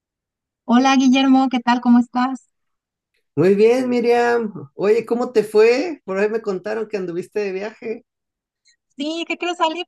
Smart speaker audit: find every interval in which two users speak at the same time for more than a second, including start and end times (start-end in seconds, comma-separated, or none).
none